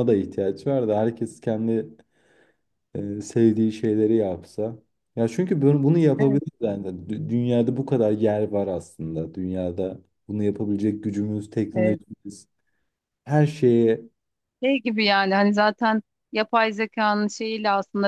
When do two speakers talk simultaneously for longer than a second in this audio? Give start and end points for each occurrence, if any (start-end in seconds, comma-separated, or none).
none